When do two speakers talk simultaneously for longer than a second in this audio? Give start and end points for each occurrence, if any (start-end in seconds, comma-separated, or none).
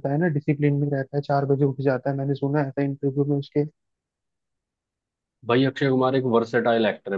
none